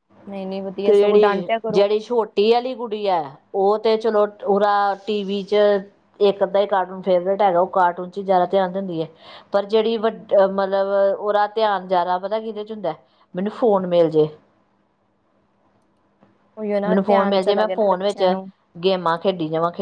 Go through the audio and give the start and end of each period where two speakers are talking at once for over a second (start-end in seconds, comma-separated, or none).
16.9-18.2